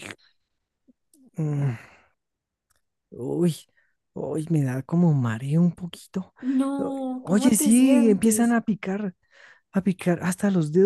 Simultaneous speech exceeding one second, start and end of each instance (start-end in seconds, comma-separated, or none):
6.8-8.6